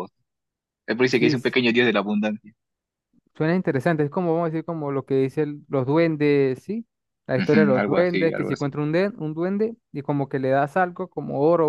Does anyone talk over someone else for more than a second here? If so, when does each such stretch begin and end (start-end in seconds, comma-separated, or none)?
7.3-8.8